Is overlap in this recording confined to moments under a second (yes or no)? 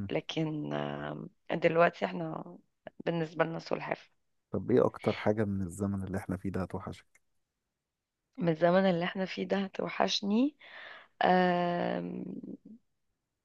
yes